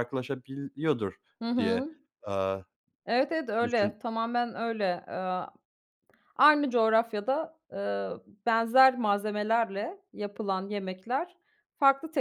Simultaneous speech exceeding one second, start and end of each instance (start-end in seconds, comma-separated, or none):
none